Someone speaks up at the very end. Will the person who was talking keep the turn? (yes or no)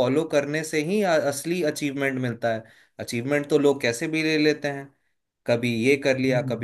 yes